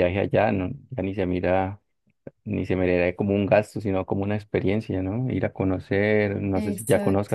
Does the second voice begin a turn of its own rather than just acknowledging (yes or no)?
no